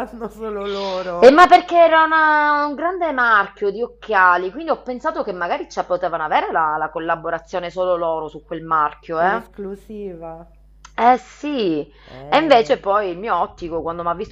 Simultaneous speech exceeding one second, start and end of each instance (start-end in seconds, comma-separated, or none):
none